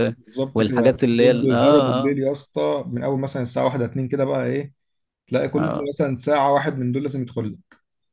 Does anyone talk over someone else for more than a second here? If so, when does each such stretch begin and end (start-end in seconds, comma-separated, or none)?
0.5-2.2